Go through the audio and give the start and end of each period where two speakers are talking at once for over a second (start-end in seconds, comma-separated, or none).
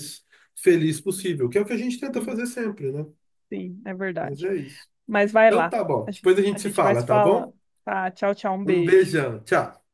5.5-7.5